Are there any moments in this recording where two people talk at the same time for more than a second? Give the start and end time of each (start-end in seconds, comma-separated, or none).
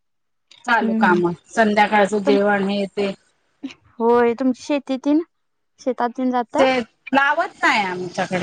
0.8-2.4